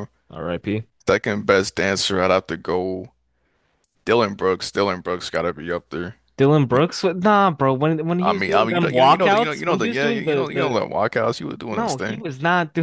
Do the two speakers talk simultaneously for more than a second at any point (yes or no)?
yes